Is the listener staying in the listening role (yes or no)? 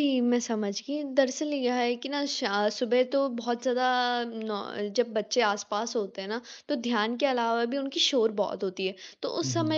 yes